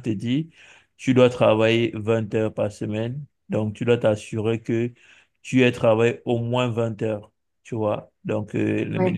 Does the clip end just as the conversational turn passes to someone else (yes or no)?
no